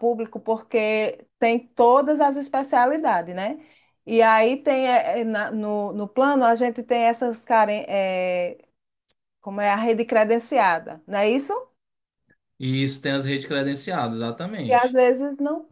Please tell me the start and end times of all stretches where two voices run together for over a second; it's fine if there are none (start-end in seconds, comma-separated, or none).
none